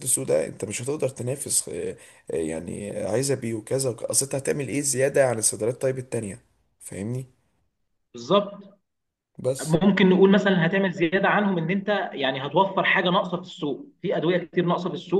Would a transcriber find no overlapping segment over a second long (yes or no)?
yes